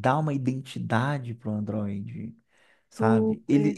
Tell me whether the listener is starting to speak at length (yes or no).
no